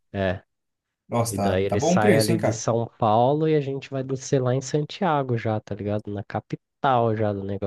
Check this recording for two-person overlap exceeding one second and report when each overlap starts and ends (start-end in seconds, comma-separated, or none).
1.3-2.6